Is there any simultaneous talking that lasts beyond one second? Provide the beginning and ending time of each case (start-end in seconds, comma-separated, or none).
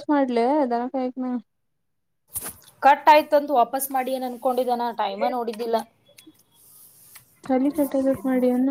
none